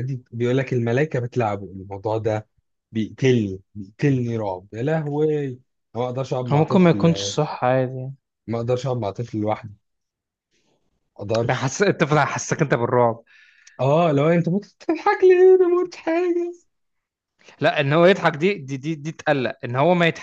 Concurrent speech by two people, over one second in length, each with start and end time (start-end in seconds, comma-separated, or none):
none